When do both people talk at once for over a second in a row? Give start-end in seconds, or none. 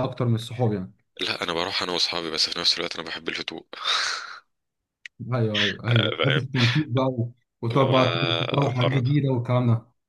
7.7-9.2